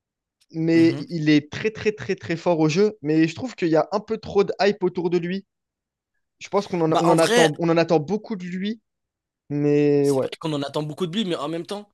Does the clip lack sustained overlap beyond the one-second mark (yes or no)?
yes